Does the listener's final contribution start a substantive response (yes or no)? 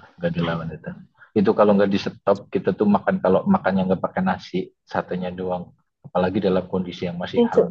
no